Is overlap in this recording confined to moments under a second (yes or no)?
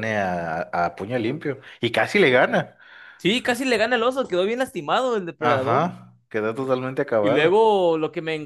yes